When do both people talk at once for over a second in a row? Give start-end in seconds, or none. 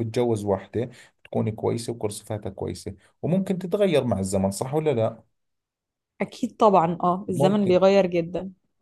none